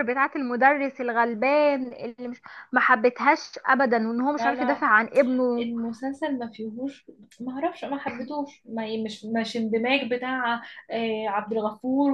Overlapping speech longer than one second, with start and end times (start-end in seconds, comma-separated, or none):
none